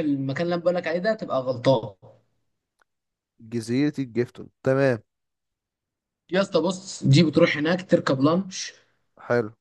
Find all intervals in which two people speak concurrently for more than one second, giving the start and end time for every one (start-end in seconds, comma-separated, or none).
none